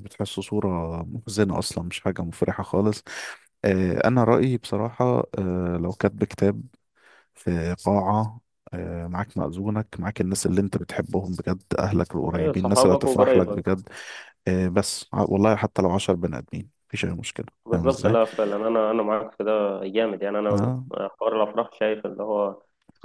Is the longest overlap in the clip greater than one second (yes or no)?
yes